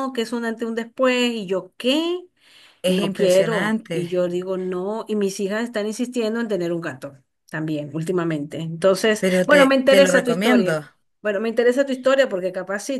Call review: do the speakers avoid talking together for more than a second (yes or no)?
no